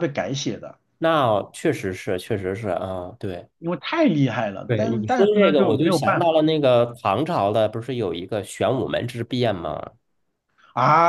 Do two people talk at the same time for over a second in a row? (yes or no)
yes